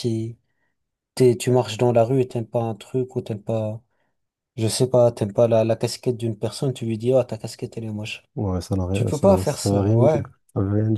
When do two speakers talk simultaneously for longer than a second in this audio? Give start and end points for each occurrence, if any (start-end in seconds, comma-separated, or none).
8.9-10.3